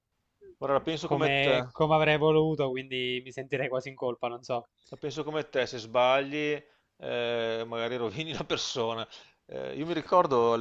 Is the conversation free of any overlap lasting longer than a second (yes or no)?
yes